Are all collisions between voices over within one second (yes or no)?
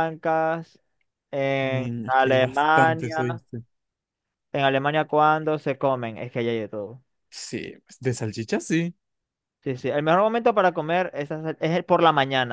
no